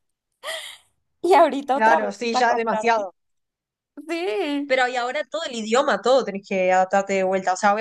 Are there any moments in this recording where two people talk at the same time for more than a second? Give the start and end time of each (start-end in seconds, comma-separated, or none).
1.7-3.1